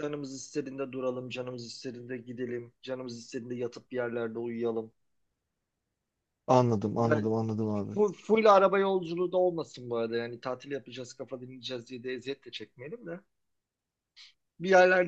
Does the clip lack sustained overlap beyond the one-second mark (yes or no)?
yes